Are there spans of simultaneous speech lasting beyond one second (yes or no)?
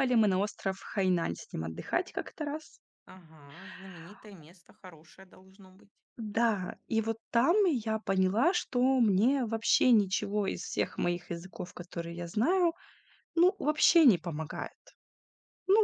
no